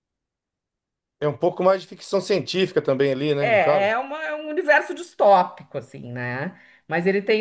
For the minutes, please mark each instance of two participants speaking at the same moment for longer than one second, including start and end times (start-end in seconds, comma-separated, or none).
none